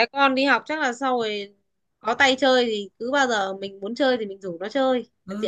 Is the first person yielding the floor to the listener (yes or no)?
yes